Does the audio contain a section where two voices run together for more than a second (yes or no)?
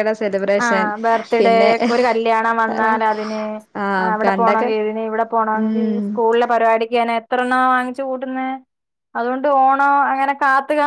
no